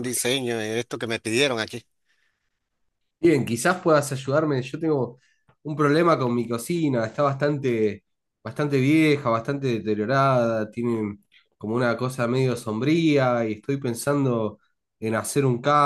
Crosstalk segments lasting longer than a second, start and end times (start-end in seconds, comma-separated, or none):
none